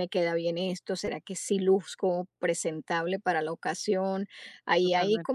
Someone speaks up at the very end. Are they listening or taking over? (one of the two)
listening